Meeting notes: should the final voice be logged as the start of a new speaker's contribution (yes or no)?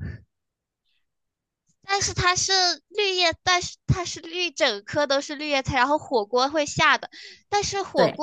no